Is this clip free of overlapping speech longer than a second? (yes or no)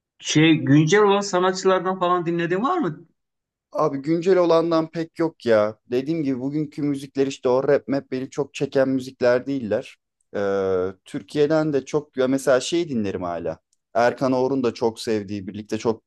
yes